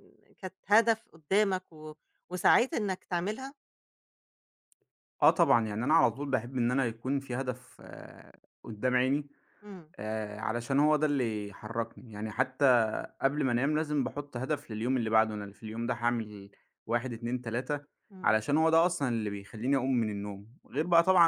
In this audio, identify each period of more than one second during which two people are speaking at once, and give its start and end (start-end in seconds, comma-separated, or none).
none